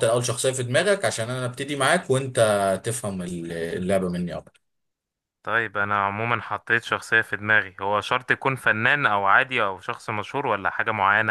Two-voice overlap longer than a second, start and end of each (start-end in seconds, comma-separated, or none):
none